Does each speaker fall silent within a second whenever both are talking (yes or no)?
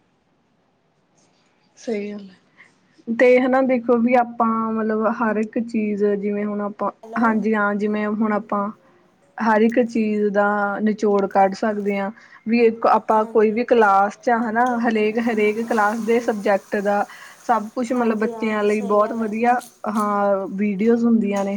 no